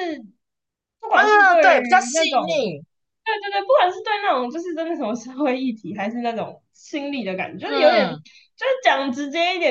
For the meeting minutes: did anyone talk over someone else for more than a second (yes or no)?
yes